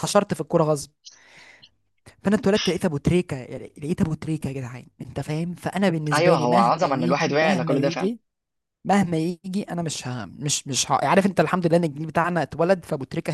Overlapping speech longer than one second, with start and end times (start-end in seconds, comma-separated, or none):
6.1-8.1